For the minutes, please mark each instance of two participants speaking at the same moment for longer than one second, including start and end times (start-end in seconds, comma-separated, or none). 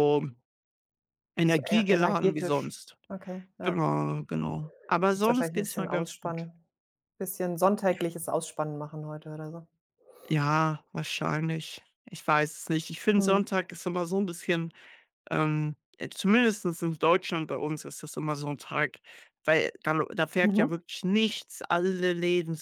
1.4-3.0, 5.1-6.5